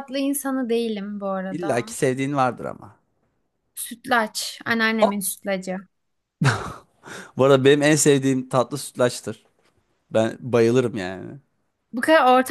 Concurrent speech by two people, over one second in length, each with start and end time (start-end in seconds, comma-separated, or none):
none